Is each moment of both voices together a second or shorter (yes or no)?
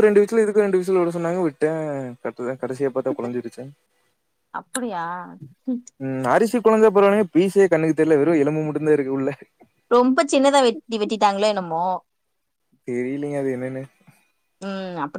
yes